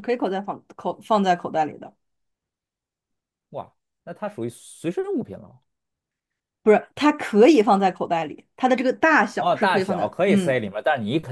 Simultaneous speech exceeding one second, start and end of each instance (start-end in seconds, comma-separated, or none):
9.3-10.6